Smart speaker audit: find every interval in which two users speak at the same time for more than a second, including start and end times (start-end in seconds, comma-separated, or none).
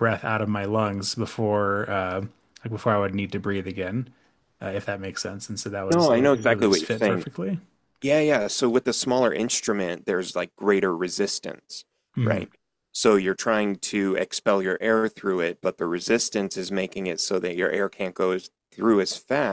5.9-7.2